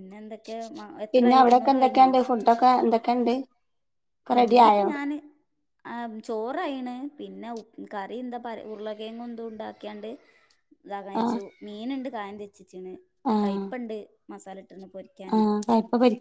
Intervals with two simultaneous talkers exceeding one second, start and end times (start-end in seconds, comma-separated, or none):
none